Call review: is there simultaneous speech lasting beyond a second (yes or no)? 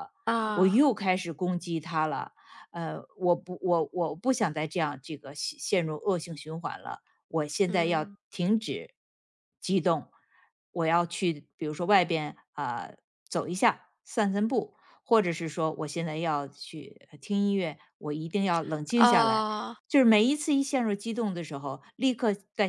no